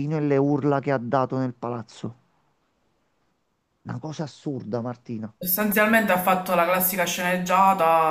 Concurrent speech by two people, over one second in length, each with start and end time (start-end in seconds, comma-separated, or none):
none